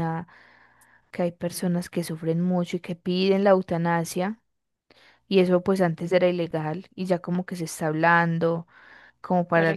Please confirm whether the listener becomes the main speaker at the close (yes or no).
no